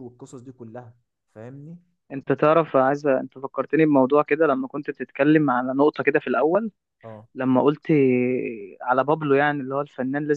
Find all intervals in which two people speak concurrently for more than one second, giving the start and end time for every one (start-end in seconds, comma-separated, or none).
none